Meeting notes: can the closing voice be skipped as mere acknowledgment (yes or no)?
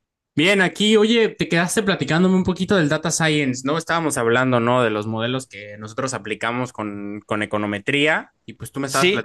yes